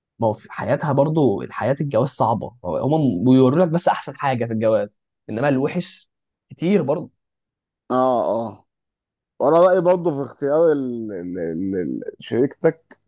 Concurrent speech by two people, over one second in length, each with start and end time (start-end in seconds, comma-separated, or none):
none